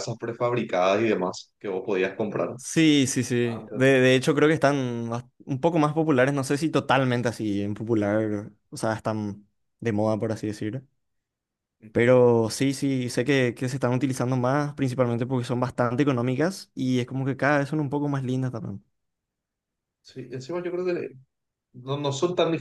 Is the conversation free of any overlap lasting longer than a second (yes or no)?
yes